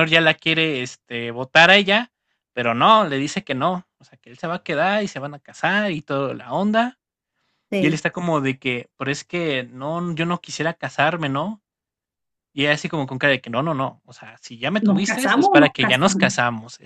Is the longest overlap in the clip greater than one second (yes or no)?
yes